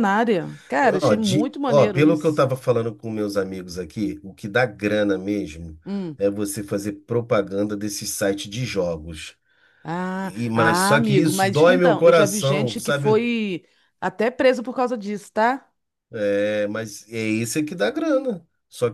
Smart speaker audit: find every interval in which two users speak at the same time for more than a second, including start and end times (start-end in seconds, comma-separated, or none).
0.8-2.5, 10.2-13.2